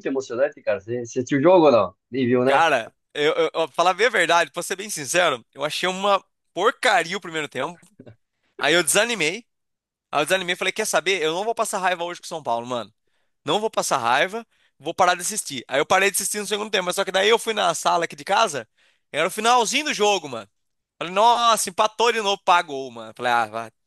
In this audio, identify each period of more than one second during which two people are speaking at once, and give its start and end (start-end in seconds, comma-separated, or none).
none